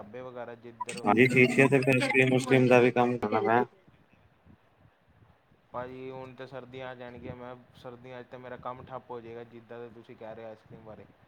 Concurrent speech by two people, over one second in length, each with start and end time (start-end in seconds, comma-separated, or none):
none